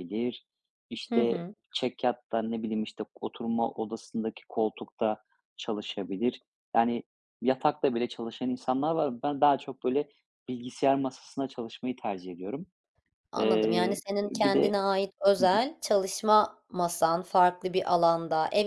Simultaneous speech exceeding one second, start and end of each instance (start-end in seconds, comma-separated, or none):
13.4-14.8